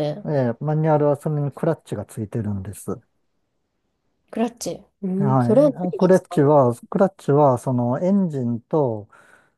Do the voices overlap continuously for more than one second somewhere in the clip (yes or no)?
yes